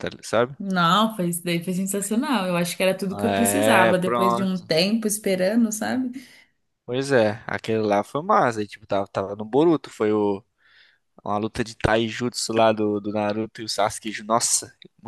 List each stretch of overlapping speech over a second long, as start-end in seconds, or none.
3.1-4.7